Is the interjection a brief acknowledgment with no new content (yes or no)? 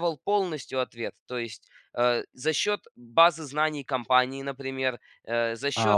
no